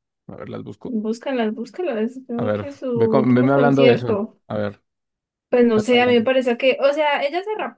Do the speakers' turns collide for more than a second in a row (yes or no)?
yes